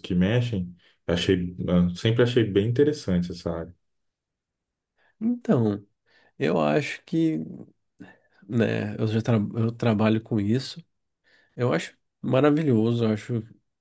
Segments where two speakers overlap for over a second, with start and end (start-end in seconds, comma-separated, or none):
none